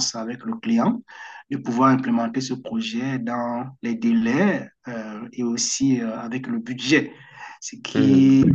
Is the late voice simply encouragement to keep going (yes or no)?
yes